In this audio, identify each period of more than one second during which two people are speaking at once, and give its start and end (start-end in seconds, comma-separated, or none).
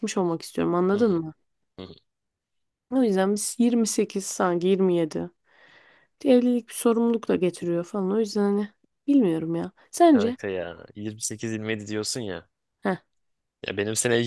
none